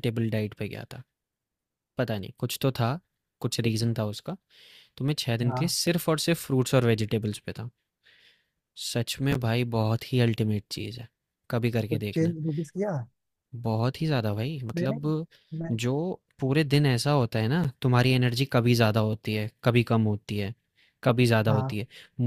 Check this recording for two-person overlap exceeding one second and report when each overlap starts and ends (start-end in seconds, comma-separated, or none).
none